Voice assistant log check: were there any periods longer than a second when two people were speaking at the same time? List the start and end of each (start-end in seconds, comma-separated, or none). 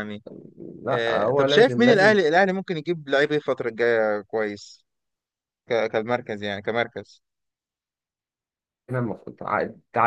0.9-2.2